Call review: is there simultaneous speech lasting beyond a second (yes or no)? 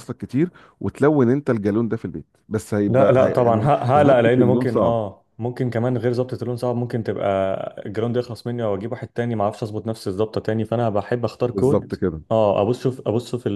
yes